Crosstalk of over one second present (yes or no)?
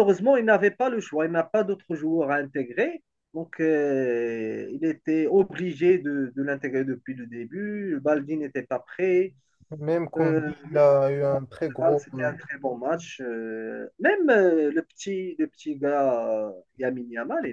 yes